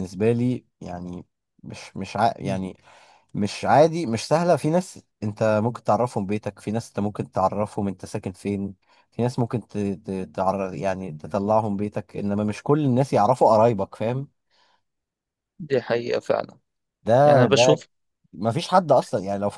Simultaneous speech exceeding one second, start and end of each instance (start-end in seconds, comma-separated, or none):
none